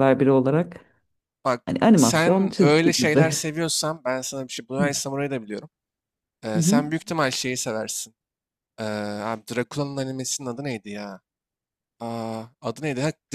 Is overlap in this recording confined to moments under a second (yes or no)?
no